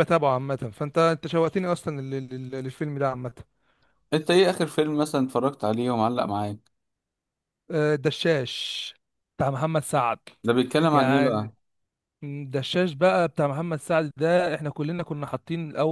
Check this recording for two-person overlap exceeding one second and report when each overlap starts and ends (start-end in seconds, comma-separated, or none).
none